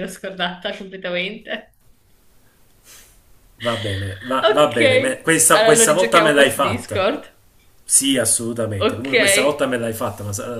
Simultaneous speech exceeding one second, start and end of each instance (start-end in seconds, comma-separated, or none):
4.4-7.1